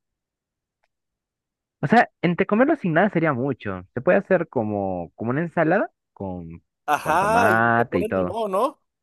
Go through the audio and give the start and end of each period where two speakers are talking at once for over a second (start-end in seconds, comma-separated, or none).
7.0-8.4